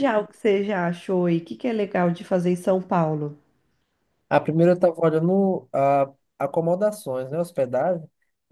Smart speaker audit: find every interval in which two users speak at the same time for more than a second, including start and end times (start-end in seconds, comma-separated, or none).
none